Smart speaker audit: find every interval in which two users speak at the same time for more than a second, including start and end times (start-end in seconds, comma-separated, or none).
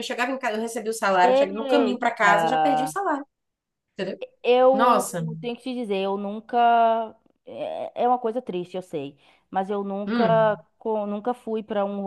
1.2-2.9